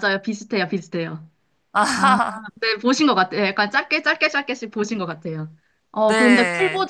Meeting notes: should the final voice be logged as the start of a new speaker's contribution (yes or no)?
no